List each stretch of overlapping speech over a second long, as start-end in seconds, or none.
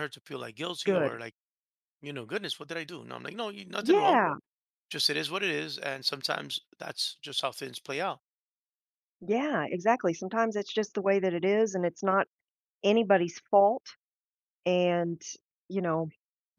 none